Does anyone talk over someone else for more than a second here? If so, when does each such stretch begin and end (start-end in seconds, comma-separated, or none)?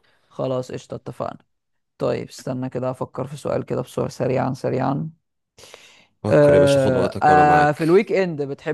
6.3-8.0